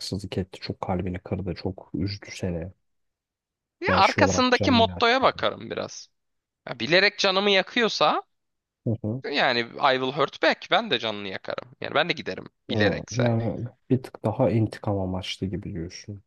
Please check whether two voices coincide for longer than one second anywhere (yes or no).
yes